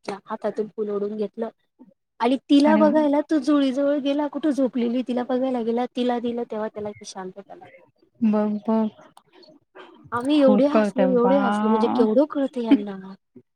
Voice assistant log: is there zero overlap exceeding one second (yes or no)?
no